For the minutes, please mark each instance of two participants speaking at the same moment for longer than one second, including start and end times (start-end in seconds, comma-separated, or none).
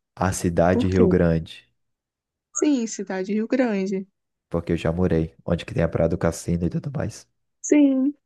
none